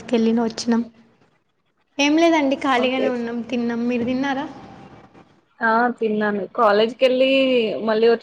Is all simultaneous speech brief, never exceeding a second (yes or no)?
yes